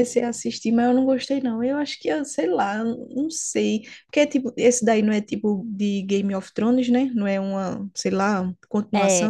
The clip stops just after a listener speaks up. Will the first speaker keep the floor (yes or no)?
no